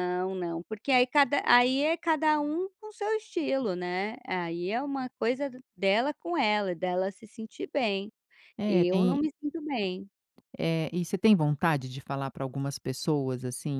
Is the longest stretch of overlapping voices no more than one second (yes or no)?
yes